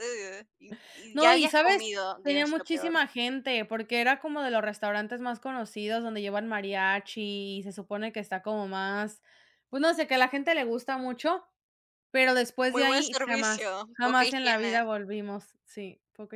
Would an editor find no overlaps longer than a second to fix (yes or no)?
no